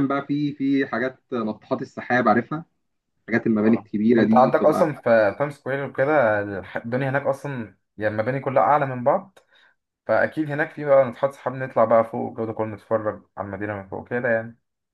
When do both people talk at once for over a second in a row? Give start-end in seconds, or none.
3.6-4.9